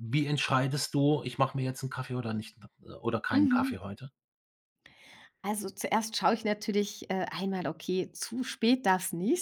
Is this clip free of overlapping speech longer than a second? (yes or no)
yes